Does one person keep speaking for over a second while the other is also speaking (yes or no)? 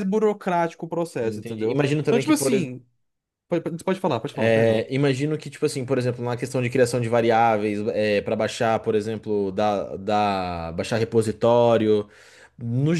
yes